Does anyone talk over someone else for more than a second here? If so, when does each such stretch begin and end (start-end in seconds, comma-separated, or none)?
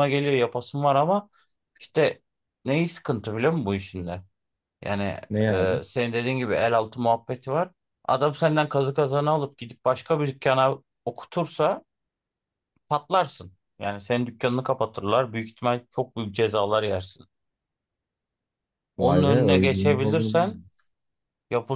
19.0-20.7